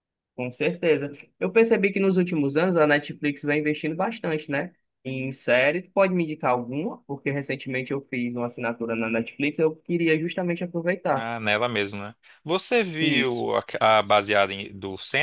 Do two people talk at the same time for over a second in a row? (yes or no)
no